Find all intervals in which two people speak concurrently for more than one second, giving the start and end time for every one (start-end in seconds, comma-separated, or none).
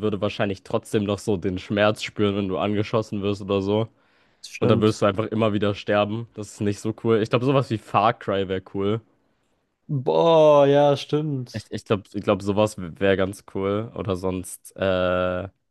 none